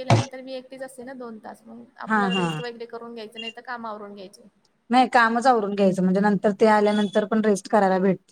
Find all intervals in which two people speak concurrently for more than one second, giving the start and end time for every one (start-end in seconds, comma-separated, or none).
none